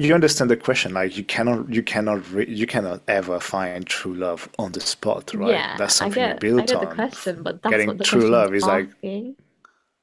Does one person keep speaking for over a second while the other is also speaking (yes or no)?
yes